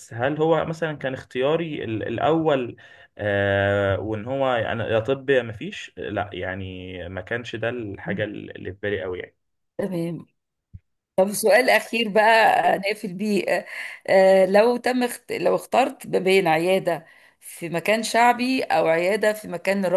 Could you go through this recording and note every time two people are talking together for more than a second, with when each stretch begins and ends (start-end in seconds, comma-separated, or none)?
none